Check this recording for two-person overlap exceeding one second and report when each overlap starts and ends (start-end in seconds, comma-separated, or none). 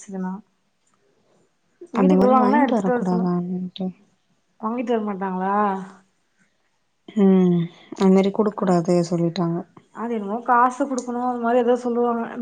2.0-3.3